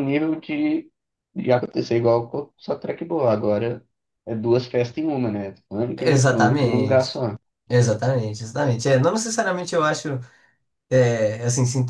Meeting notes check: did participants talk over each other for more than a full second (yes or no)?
yes